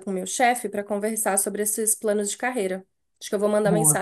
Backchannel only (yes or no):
yes